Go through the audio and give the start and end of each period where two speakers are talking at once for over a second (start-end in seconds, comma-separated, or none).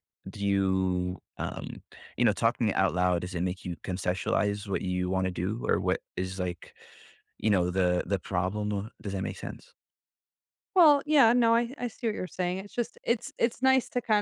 none